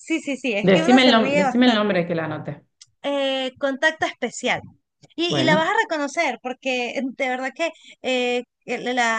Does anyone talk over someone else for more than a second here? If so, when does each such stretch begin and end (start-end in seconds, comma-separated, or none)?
0.7-2.0